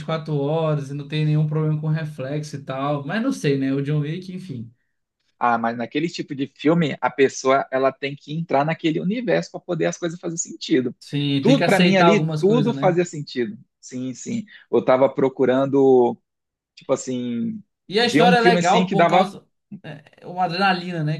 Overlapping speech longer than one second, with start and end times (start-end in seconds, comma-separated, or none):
11.4-13.0, 18.0-19.3